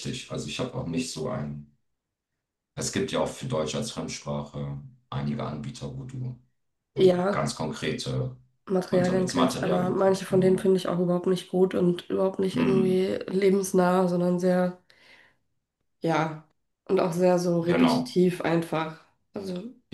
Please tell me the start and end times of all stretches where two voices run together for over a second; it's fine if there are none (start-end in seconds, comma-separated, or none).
8.9-10.7